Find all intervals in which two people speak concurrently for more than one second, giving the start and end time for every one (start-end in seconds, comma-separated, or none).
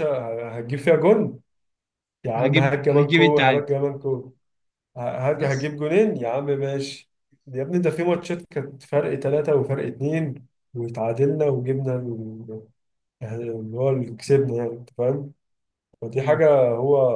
2.3-3.6